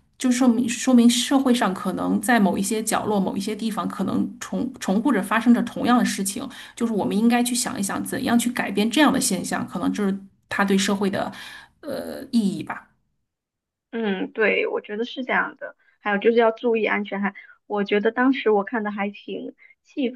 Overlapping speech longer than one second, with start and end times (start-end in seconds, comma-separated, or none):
none